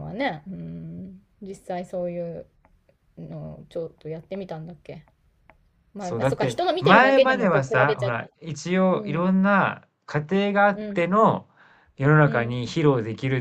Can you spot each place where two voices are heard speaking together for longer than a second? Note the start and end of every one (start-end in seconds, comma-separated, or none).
6.0-8.2